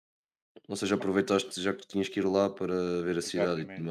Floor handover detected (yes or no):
yes